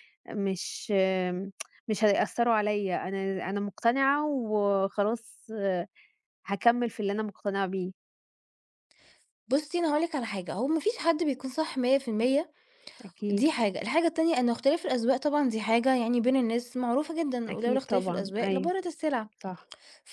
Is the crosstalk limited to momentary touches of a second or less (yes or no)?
no